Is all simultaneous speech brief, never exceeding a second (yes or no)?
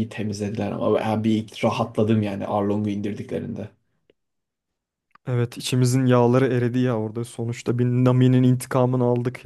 yes